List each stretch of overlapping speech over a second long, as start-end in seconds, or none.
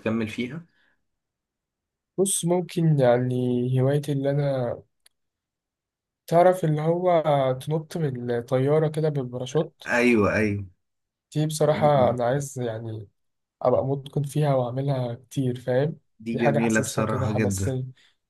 16.2-17.8